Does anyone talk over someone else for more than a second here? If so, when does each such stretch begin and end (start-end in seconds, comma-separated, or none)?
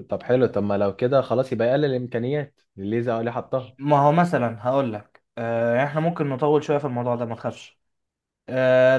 none